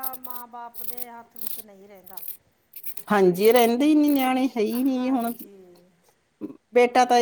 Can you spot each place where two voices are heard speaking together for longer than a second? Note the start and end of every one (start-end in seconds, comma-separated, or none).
none